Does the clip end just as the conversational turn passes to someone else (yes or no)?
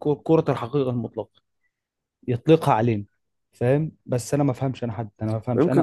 yes